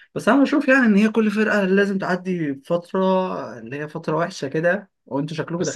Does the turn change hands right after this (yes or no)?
yes